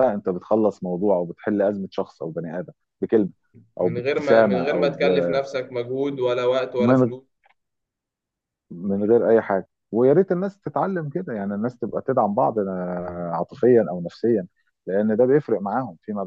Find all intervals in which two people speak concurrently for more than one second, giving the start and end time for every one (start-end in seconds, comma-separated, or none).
3.8-5.1